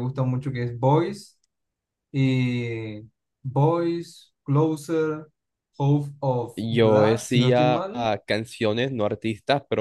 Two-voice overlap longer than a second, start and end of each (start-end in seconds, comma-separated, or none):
6.5-8.1